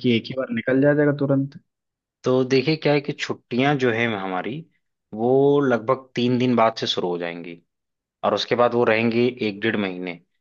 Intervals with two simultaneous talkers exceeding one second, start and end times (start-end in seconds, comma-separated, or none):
none